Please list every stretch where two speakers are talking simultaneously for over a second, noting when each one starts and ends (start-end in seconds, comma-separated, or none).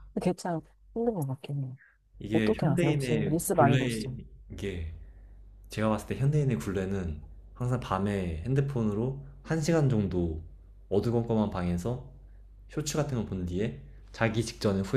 2.3-4.1